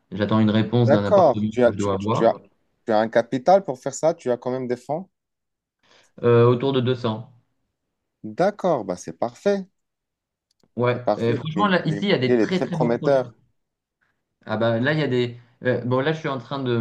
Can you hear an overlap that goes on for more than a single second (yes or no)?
yes